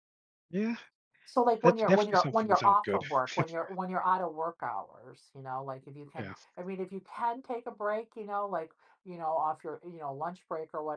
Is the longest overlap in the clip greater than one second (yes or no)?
yes